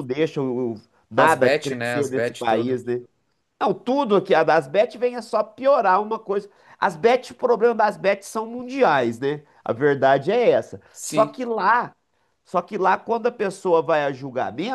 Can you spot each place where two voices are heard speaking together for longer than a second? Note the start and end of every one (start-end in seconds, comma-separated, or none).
1.2-2.8